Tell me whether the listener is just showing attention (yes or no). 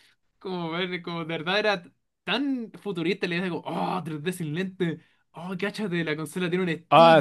no